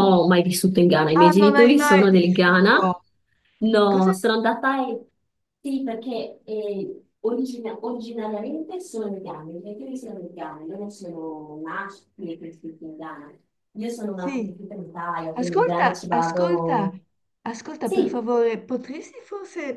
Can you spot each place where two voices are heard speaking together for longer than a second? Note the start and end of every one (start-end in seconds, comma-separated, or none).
1.2-2.8, 15.3-16.9